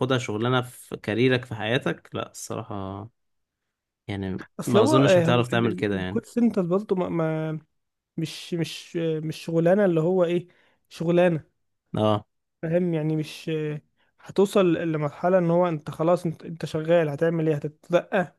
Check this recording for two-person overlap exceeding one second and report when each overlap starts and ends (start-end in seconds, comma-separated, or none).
4.6-6.2